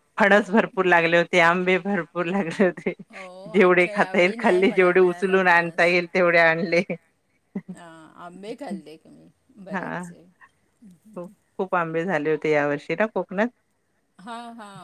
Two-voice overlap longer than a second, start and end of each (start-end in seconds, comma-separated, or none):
3.6-5.3